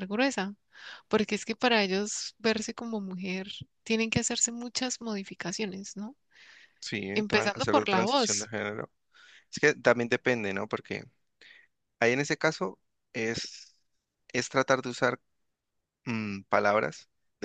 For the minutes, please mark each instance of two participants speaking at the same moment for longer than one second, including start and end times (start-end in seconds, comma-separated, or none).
7.2-8.5